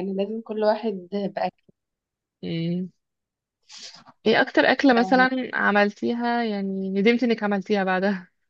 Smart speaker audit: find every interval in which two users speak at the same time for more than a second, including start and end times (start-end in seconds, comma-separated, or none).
none